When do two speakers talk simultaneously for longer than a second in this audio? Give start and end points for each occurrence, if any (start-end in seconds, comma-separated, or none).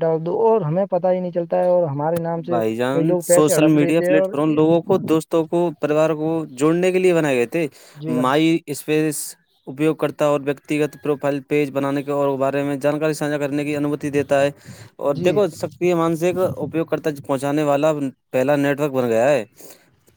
2.5-4.6